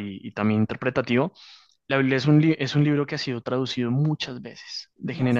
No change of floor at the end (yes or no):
yes